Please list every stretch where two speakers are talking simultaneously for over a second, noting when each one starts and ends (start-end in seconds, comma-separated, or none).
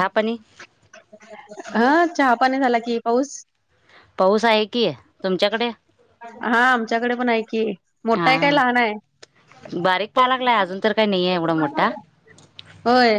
none